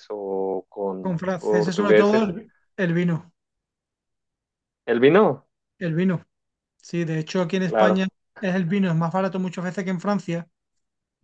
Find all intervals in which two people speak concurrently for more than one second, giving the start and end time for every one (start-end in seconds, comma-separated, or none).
1.0-2.3